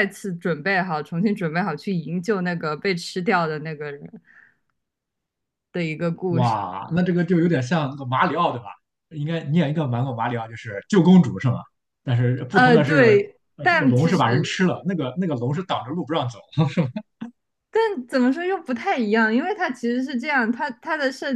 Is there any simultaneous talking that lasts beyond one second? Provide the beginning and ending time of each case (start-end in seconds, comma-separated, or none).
12.5-14.6